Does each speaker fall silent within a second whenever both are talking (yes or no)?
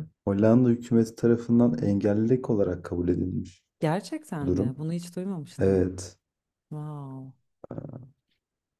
yes